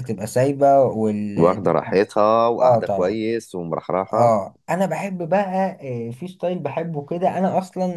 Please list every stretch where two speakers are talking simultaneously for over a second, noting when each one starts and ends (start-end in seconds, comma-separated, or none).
none